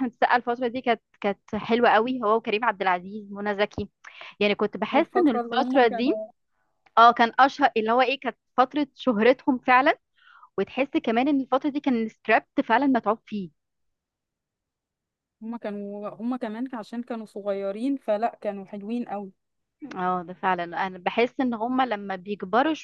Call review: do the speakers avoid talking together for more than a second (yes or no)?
no